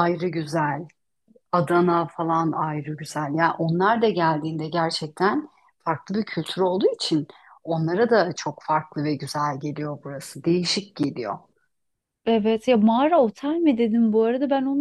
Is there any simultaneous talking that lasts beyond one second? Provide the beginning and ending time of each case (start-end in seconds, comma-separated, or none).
none